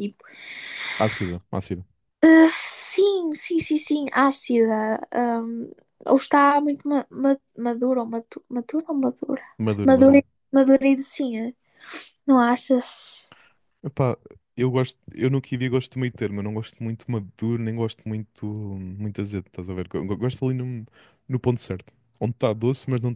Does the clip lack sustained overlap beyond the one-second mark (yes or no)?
yes